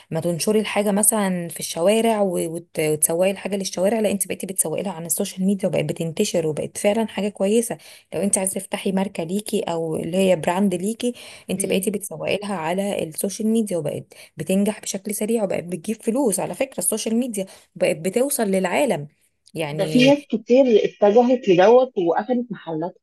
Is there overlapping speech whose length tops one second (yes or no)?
no